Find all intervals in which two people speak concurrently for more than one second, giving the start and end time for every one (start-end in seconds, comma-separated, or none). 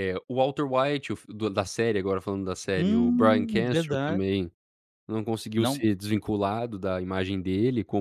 2.8-4.2